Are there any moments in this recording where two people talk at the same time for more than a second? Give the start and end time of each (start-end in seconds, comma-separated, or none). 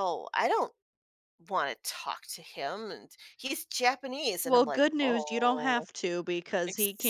4.4-5.9